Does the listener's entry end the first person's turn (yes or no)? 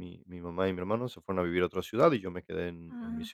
no